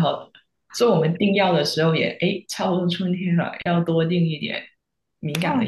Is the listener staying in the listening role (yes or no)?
yes